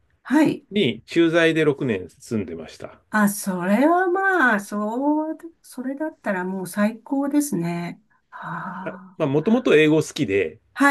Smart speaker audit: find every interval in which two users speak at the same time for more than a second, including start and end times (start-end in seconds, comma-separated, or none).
none